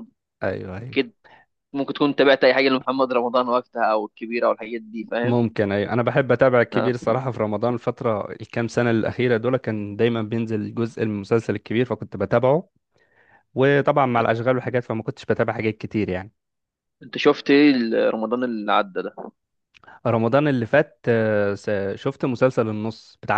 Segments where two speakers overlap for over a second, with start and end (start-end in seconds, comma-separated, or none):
none